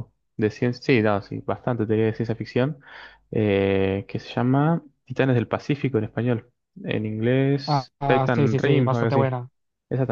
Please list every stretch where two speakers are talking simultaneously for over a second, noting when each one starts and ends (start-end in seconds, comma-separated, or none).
7.7-9.3